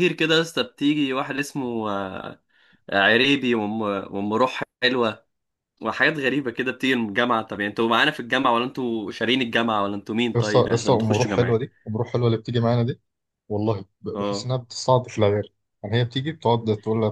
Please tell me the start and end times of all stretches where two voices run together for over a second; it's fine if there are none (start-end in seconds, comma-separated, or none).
10.3-11.6